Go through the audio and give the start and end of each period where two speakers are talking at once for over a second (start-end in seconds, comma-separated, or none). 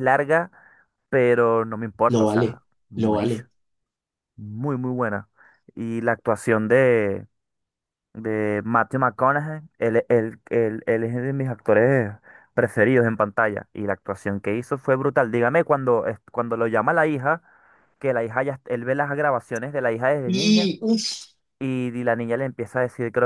2.1-3.5